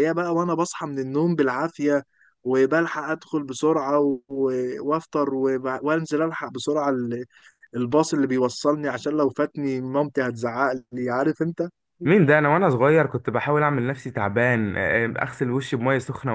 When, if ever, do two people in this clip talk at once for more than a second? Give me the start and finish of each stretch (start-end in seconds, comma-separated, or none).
none